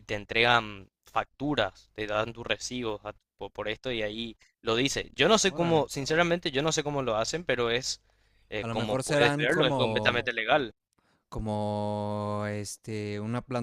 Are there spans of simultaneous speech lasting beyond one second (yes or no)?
yes